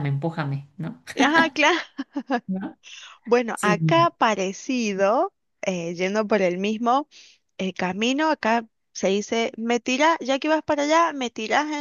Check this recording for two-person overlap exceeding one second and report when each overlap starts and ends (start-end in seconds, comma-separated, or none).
none